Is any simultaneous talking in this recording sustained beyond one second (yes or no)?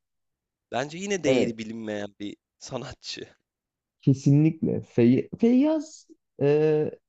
no